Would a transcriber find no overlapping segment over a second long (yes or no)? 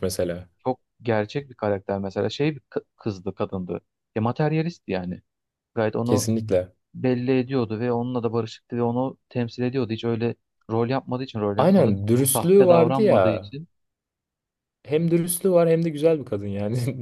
no